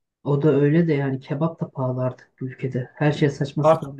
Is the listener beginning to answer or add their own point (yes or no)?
yes